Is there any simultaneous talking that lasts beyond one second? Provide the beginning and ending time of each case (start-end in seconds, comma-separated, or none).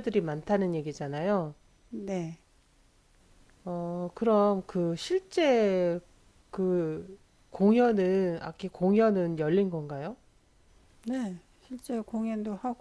none